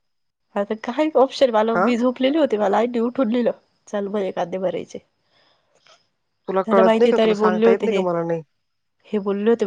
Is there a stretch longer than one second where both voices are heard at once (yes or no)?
yes